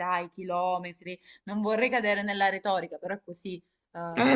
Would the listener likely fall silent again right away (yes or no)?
no